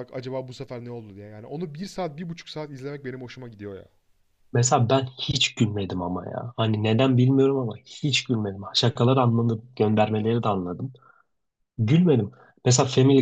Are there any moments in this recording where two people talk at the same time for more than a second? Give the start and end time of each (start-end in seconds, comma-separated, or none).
none